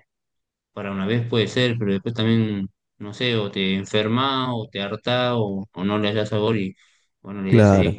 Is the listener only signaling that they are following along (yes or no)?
yes